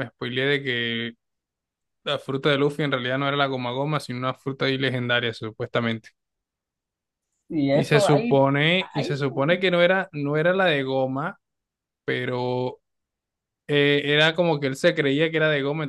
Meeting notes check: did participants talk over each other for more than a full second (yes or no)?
yes